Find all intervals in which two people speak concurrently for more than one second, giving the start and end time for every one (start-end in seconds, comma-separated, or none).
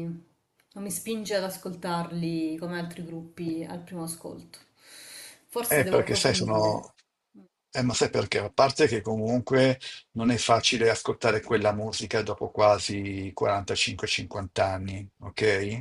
5.7-6.9